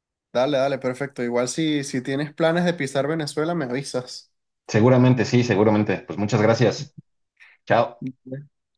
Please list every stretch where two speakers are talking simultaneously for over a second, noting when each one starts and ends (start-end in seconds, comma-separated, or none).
none